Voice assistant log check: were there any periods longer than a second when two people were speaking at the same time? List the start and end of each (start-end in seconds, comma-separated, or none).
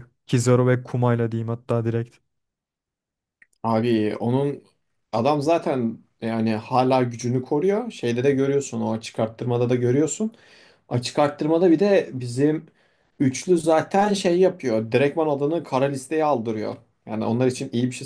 none